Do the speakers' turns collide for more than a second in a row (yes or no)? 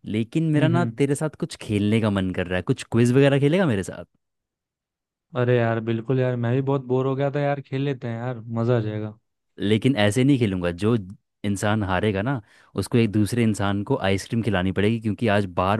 no